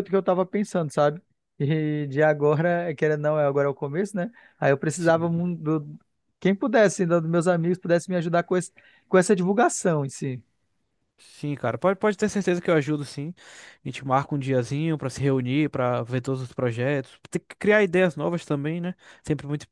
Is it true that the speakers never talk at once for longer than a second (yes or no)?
yes